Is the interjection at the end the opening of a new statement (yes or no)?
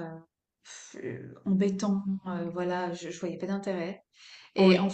no